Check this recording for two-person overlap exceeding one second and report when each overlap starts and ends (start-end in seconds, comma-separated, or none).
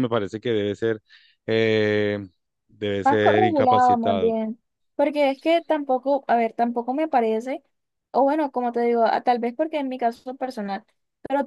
3.0-4.3